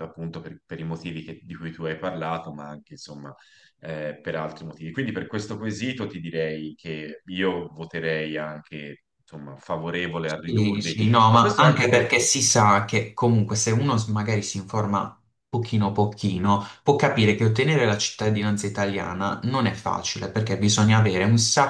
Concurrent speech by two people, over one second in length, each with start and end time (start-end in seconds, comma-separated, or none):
10.4-12.3